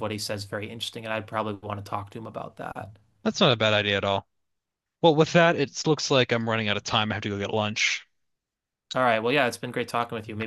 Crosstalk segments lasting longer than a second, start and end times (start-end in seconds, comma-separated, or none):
none